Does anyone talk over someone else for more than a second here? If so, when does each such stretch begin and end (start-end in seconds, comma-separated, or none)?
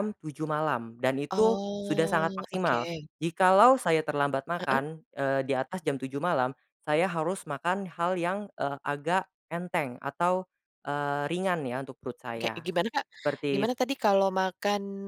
1.3-3.1